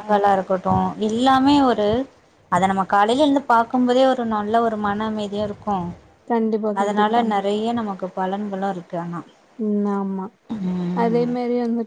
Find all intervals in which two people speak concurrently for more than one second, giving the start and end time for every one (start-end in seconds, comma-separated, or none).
none